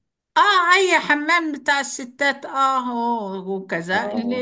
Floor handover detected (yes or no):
no